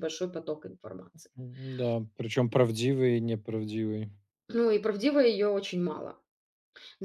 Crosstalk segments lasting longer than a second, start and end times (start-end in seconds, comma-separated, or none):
none